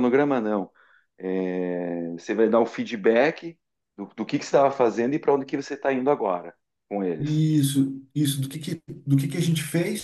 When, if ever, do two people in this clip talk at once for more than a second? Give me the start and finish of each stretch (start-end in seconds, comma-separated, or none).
none